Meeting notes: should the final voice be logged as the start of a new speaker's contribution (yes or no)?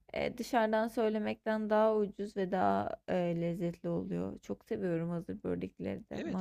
yes